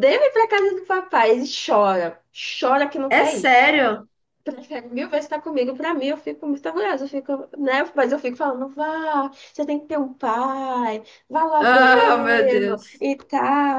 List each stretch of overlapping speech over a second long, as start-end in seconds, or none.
11.6-13.1